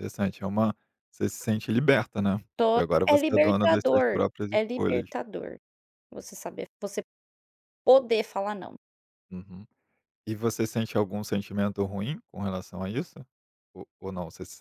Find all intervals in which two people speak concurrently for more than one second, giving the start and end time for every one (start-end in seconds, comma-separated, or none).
2.5-5.1